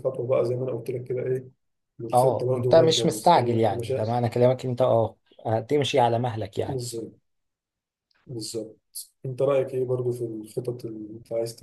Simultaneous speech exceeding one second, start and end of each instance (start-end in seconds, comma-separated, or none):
2.1-4.2